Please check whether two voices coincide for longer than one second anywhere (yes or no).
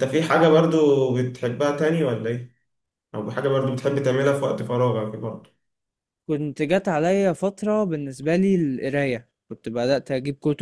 no